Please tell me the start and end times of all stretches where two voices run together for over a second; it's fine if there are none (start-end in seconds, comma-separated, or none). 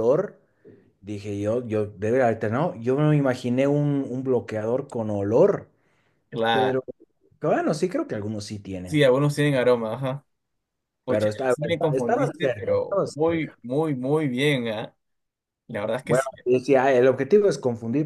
11.1-13.6